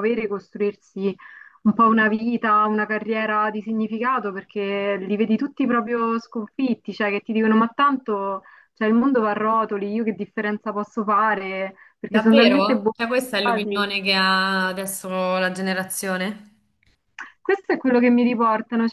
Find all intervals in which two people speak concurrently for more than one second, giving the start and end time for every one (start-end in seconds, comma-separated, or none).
12.1-13.9